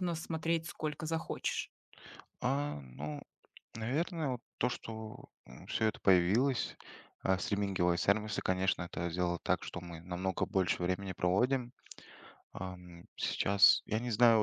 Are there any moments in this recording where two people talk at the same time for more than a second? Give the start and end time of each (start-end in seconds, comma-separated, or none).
none